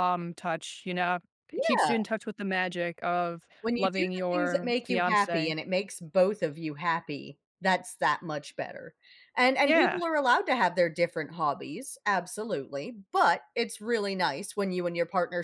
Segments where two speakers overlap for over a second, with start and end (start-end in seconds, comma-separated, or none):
3.6-5.5